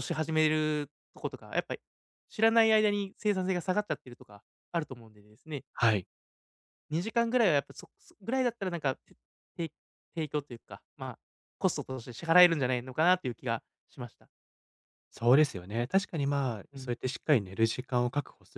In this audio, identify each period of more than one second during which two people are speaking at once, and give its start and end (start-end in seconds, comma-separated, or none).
none